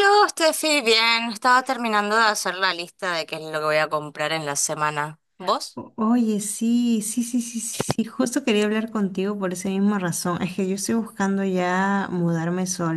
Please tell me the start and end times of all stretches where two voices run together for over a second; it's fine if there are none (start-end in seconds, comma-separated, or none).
none